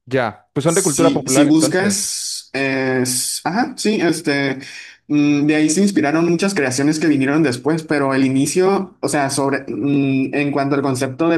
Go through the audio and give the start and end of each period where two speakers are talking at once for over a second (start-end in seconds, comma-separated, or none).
0.7-2.1